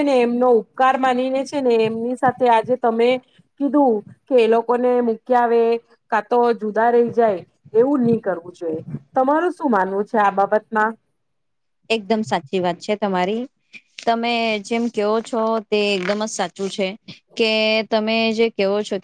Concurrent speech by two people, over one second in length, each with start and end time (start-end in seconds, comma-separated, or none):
none